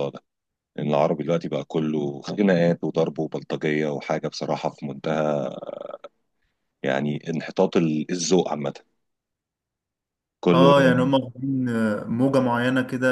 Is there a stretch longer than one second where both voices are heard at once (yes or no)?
no